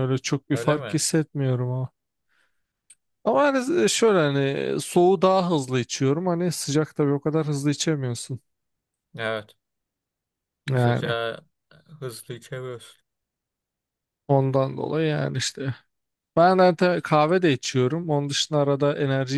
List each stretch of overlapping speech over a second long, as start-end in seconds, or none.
none